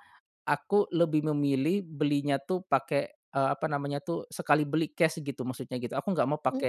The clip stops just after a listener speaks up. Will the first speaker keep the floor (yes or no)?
yes